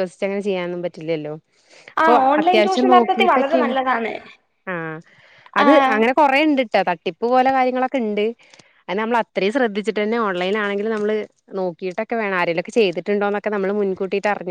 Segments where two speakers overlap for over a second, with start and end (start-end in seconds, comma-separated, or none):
2.0-3.7